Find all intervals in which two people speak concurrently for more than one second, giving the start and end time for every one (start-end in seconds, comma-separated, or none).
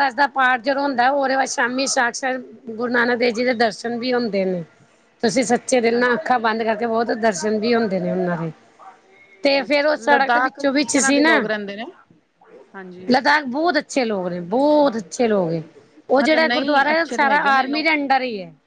9.7-11.4, 16.2-17.8